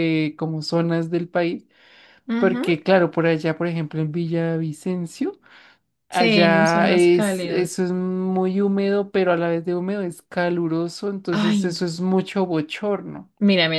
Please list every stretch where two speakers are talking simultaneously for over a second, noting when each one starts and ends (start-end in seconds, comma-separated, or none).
6.1-7.8